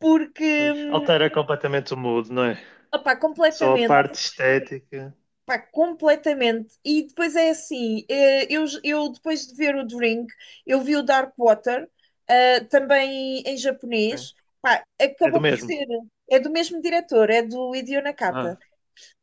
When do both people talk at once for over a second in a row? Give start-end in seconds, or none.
none